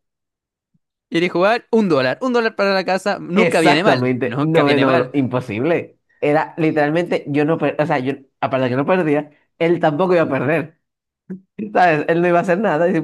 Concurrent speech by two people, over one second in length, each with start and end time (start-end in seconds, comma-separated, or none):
3.3-5.1